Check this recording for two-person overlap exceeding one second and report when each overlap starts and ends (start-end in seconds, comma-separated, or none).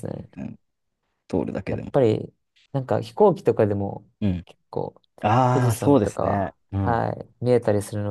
5.5-7.1